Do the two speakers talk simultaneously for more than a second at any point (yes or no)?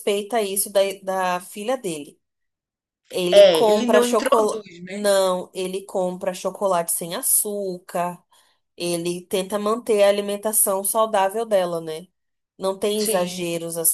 yes